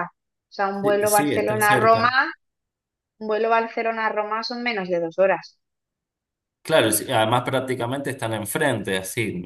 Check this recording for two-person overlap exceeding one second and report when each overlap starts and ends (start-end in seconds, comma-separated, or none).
0.8-2.1